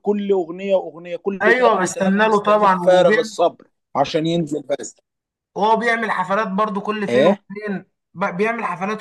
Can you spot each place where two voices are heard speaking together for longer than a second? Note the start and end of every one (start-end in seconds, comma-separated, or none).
1.4-2.8